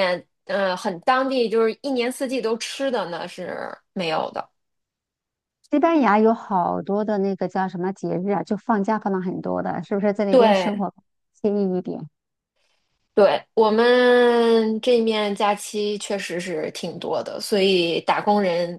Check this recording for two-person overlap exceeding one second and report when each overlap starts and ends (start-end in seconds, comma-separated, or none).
none